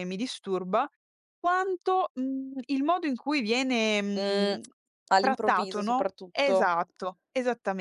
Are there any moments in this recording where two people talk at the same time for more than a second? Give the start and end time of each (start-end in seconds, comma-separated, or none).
5.2-6.7